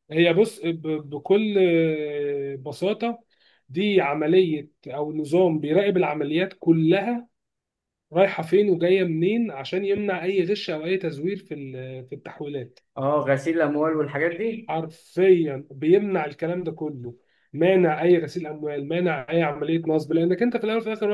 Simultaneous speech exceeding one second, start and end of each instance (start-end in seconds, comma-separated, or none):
none